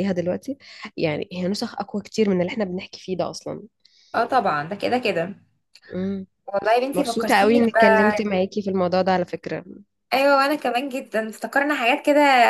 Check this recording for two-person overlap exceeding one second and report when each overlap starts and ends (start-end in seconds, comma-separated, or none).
6.9-8.3